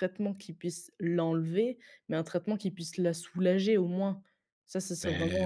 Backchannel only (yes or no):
no